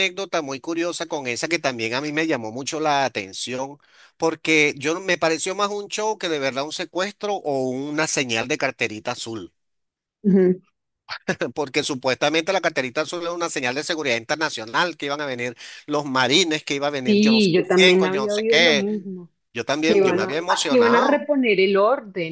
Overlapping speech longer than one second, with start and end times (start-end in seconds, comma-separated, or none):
17.1-18.9, 19.9-21.3